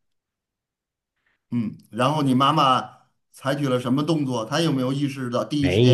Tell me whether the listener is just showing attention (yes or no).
no